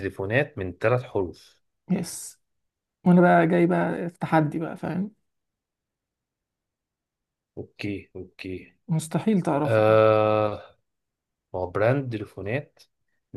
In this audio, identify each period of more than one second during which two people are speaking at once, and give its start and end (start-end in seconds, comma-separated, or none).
none